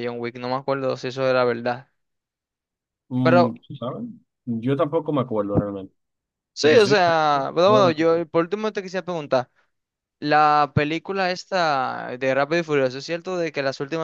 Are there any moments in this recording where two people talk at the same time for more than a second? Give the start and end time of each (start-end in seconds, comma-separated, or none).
6.5-8.2